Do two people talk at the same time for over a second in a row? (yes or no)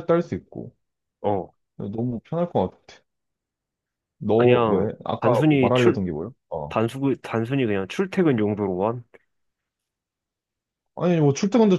yes